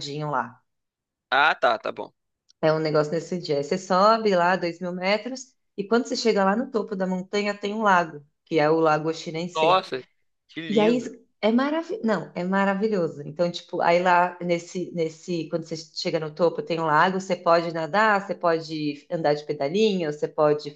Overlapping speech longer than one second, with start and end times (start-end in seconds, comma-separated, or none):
none